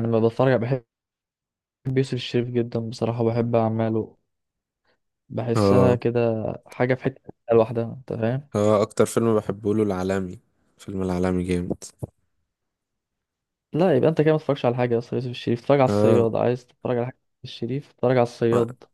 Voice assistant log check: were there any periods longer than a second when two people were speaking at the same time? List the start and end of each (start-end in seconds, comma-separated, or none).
none